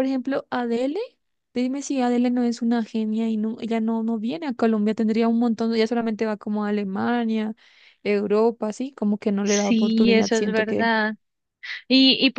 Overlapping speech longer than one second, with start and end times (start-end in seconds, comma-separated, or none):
9.4-10.9